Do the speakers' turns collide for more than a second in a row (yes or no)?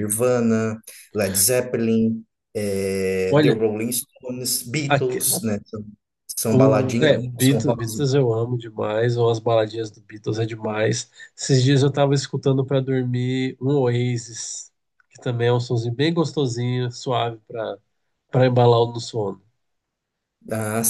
yes